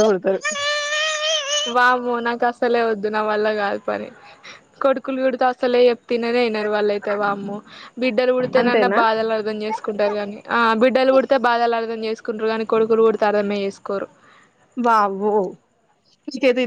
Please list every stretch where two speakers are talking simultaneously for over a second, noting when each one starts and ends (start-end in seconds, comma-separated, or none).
none